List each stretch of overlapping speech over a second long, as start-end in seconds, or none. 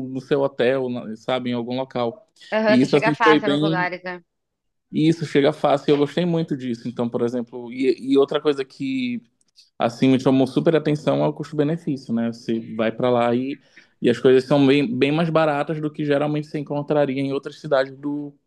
2.7-3.9